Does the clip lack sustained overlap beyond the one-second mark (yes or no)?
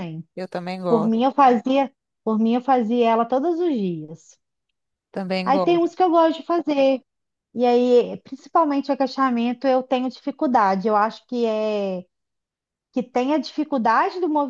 yes